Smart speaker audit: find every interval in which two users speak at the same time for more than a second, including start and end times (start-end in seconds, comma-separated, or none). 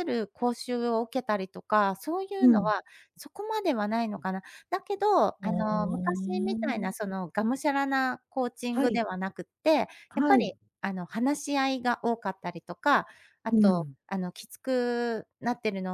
5.4-6.9